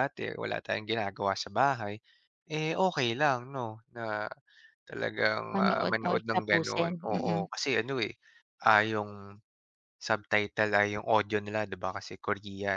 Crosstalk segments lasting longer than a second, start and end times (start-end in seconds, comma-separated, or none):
5.5-7.4